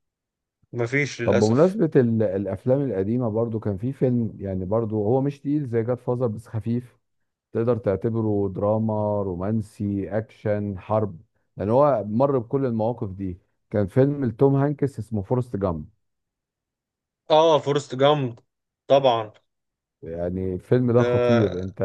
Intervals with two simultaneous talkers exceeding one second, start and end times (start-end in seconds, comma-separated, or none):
none